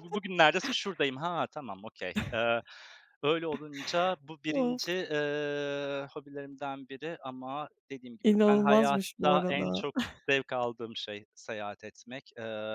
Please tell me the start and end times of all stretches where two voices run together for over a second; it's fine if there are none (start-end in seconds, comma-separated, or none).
8.2-9.8